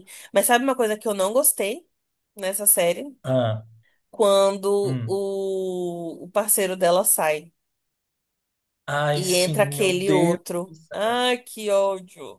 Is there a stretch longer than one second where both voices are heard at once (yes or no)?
yes